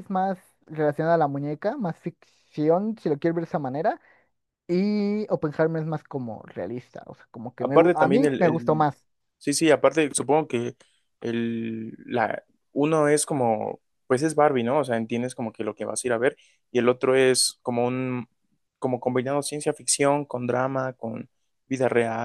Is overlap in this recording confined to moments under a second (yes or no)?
no